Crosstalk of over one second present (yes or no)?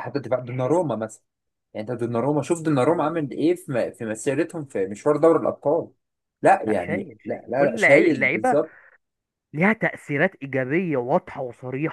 yes